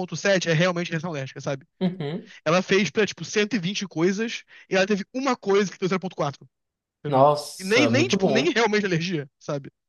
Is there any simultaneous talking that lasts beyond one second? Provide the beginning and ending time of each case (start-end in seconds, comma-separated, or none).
7.1-8.6